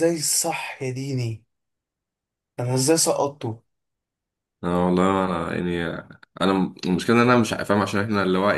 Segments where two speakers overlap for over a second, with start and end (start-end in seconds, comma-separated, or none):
none